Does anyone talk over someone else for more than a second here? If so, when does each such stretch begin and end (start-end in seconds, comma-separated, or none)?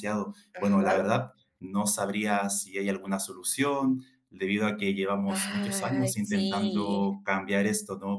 5.3-7.1